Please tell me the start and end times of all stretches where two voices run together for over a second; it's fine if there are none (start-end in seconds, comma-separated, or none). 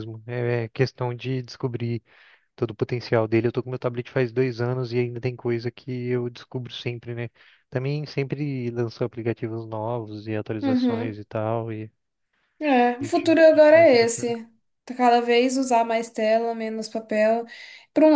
13.0-14.3